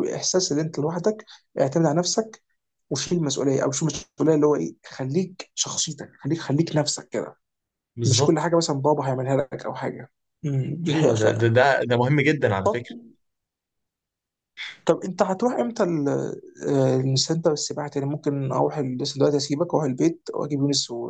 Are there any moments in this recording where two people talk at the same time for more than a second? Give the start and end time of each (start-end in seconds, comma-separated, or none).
none